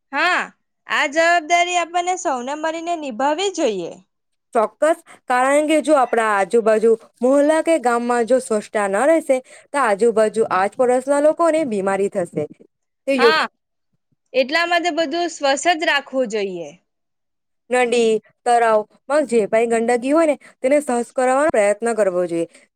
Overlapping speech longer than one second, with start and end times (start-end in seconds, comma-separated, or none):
none